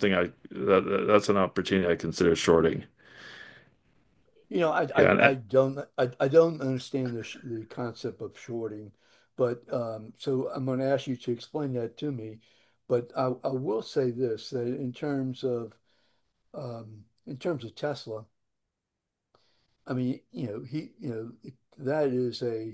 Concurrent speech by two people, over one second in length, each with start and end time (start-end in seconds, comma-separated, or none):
none